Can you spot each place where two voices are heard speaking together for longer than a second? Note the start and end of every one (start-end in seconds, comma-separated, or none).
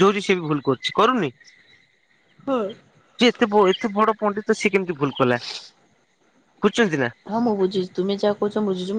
none